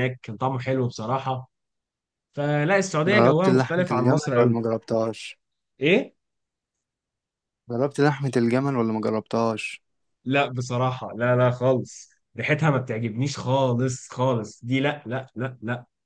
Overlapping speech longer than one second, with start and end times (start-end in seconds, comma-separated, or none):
3.1-4.6